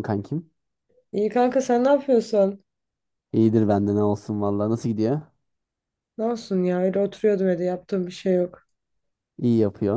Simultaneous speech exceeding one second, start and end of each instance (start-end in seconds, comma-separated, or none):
none